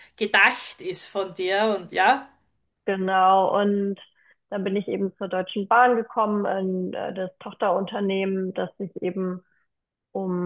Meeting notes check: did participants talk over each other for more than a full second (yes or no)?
no